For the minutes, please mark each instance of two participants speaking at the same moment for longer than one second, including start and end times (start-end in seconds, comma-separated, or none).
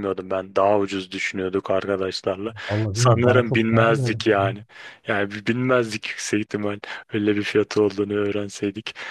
2.9-4.3